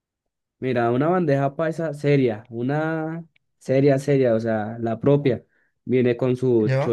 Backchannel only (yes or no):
yes